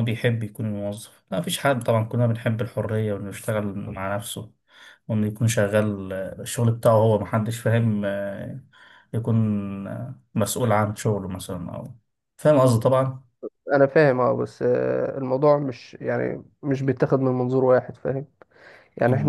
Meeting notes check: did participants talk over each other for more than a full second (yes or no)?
no